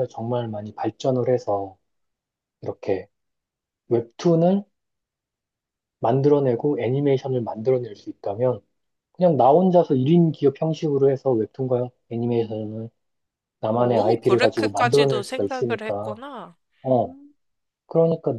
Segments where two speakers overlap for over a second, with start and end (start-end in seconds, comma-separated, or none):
13.8-16.2